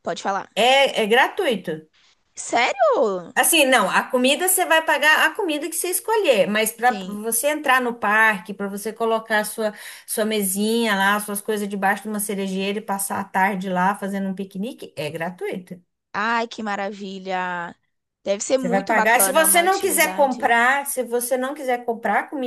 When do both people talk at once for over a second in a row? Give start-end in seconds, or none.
18.6-20.6